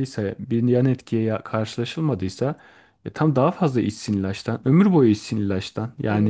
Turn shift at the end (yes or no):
yes